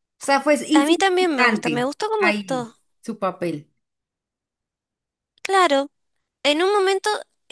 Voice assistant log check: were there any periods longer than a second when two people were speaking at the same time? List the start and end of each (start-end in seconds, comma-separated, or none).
0.7-2.8